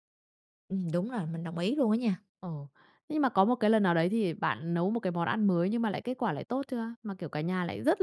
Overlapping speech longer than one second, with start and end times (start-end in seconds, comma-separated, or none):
none